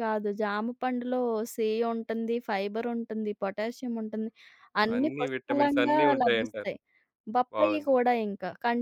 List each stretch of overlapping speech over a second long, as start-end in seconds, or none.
5.0-6.7